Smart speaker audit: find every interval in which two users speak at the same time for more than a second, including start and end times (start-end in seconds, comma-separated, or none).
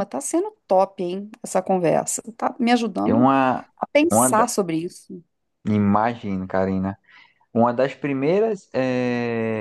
none